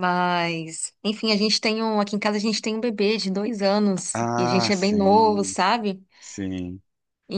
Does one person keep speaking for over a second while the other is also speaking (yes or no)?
yes